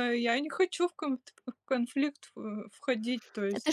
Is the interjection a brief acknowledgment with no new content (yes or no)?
no